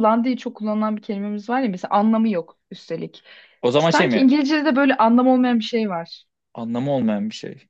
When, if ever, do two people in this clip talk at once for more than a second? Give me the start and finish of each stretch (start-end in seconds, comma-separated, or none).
none